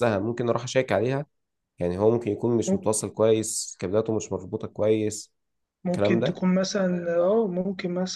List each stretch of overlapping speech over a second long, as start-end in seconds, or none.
none